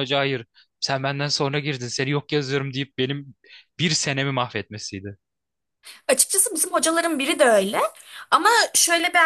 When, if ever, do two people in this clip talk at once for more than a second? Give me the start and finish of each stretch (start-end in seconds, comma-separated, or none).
none